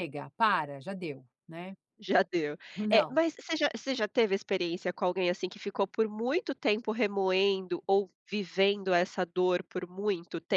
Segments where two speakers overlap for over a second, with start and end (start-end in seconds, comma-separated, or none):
none